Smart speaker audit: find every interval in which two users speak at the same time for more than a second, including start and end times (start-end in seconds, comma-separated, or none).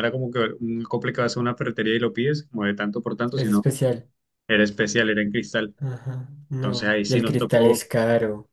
6.5-7.9